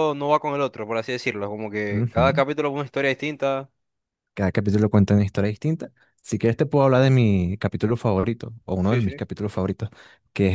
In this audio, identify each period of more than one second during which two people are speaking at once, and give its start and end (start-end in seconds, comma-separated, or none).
none